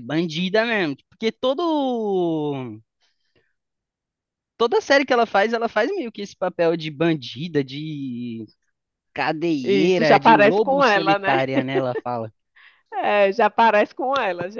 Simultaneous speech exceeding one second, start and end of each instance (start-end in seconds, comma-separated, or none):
9.6-11.4